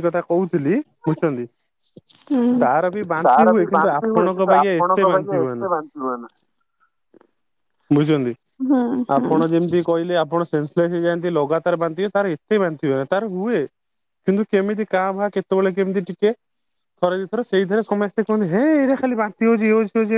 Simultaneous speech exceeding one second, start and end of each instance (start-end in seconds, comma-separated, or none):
3.2-5.7